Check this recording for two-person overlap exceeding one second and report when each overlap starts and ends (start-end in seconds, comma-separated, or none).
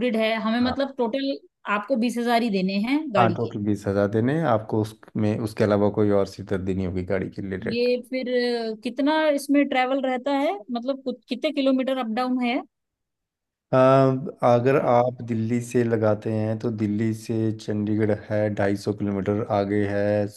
none